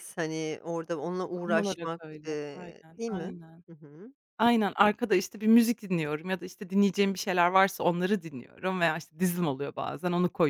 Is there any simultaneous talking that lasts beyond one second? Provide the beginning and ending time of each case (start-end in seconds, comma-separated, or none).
1.4-3.3